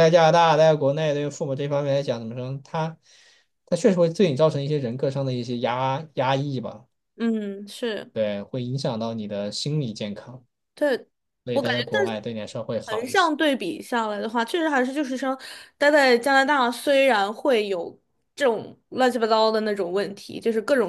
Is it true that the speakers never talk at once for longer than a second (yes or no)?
yes